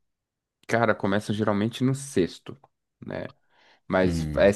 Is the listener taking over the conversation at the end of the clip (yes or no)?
no